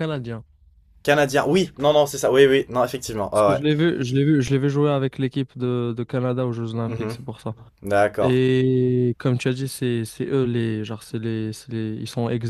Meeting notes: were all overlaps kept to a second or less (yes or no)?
yes